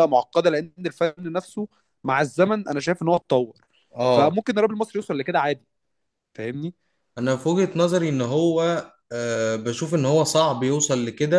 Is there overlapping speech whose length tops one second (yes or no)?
no